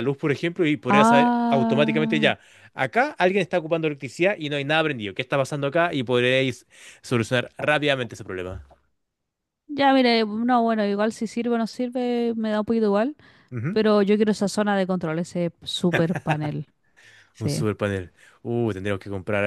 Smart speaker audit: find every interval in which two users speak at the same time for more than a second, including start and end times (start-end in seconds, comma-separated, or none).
0.9-2.3